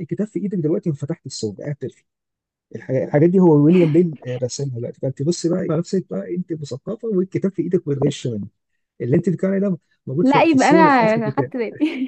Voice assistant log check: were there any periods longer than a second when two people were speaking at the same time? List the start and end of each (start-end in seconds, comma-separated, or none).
10.2-11.5